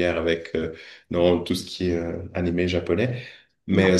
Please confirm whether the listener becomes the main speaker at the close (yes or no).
no